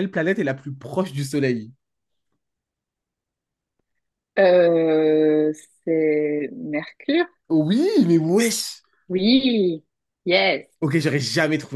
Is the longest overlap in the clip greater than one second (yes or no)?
no